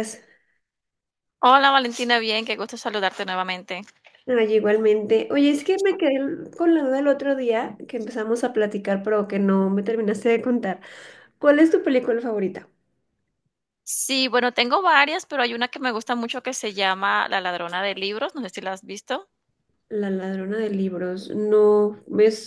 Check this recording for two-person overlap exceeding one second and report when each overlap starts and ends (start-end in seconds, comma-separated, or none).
none